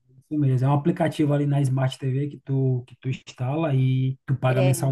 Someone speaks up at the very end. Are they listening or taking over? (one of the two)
listening